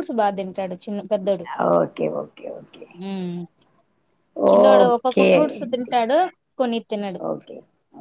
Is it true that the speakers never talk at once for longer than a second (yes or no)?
no